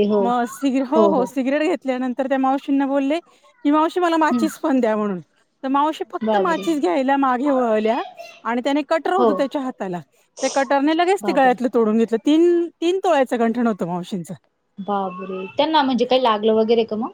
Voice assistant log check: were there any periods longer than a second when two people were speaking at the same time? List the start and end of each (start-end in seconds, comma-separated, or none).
none